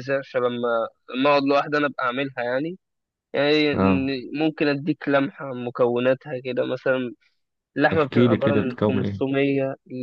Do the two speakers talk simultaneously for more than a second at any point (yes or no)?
yes